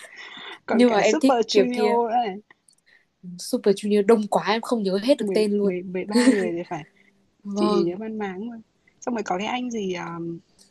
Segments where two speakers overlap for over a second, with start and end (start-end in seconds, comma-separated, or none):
0.7-2.0